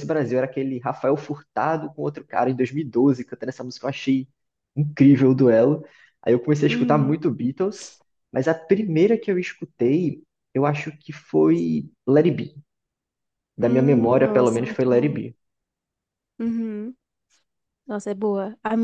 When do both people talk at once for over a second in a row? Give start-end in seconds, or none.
13.6-15.2